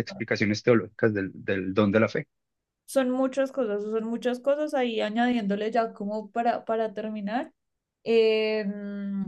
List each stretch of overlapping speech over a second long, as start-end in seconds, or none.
none